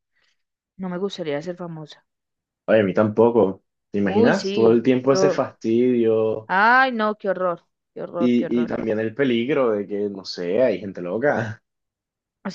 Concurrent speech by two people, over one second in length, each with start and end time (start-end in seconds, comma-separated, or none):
4.0-5.4